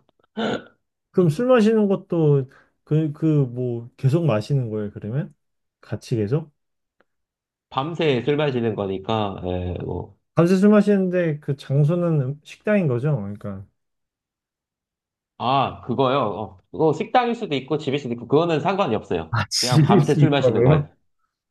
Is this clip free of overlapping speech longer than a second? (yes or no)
no